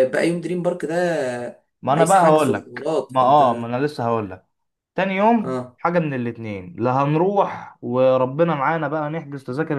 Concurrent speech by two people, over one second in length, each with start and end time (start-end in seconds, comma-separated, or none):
1.9-3.7